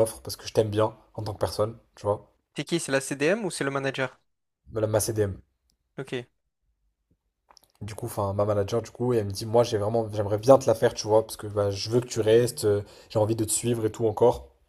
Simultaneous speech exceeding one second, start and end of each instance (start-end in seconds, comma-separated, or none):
none